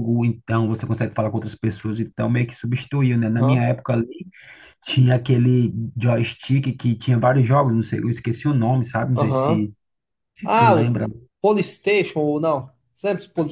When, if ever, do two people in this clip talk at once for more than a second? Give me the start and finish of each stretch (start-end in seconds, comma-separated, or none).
none